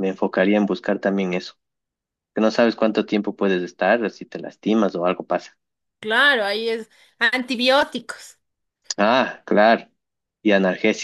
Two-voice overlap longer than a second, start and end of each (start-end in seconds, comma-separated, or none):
none